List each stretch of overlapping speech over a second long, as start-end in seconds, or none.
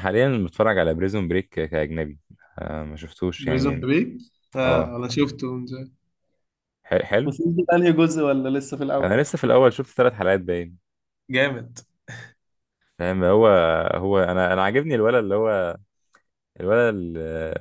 none